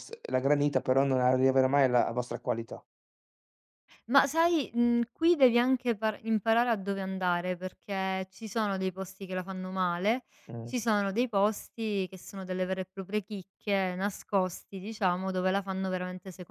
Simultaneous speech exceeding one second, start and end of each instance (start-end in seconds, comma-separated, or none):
none